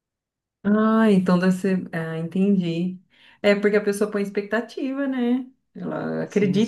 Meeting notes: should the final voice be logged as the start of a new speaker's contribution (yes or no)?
yes